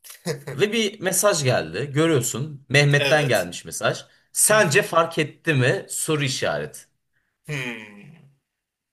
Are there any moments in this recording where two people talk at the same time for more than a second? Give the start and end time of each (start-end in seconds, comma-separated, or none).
none